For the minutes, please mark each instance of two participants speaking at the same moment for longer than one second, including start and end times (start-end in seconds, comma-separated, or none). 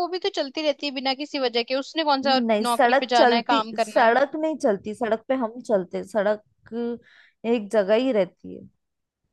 2.3-4.2